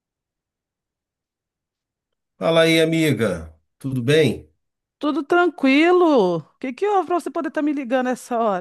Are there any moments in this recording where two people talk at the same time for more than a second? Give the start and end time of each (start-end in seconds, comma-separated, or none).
none